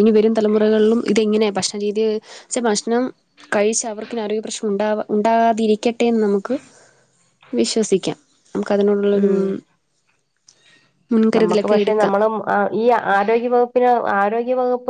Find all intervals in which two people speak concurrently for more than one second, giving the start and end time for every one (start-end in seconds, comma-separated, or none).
none